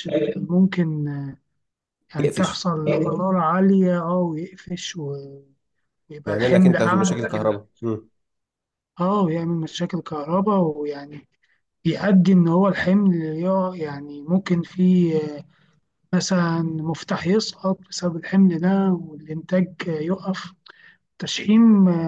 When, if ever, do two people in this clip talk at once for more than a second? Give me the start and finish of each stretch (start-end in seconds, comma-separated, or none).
6.3-7.6